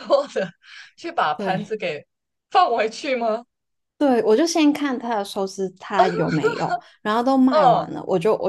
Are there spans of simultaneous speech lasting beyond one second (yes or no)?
no